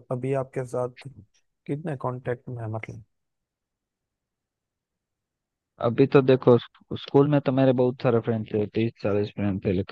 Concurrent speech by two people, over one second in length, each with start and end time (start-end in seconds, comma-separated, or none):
none